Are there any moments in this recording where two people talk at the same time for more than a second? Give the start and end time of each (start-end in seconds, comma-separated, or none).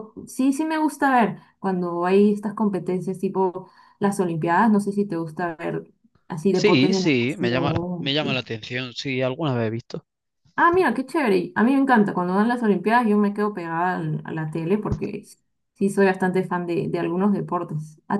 6.5-8.4